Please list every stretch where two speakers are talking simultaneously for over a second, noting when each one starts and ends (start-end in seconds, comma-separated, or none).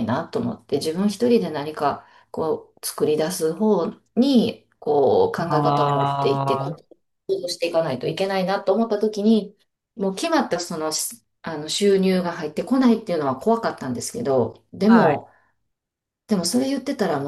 5.5-6.8